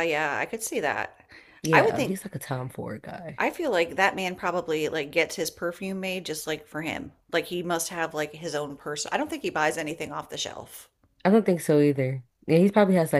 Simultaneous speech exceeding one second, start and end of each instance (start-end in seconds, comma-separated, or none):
none